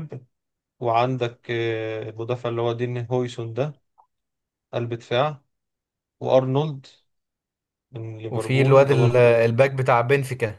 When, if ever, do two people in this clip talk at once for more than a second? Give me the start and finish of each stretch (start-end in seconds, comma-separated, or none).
8.3-9.5